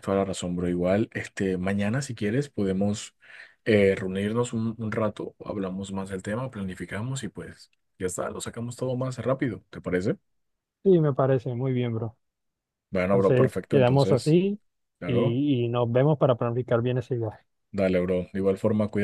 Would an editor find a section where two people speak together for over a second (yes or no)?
yes